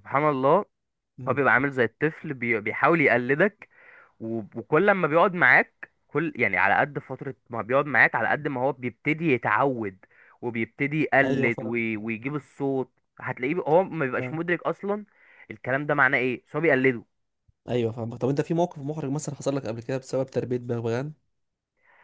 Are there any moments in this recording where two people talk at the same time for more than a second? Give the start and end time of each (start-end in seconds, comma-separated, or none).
none